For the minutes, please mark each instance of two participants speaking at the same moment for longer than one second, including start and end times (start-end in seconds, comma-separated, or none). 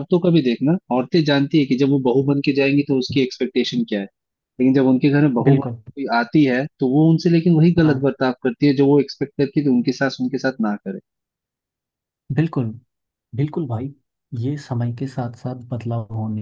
none